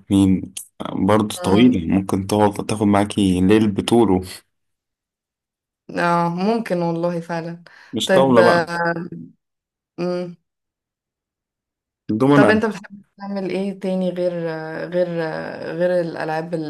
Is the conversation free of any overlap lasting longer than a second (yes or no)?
yes